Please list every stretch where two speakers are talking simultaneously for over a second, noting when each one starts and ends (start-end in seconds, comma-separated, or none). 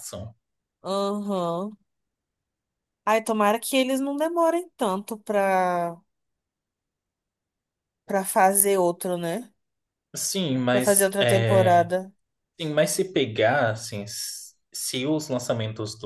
10.7-11.9